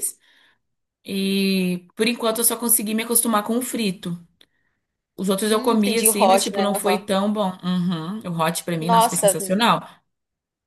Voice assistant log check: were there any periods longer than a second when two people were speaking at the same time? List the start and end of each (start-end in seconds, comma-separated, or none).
5.5-7.1